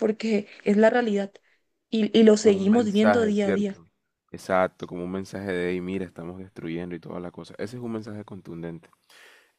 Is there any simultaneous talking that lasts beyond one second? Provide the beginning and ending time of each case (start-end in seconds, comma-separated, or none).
2.4-3.8